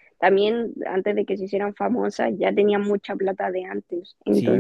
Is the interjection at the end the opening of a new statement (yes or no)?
yes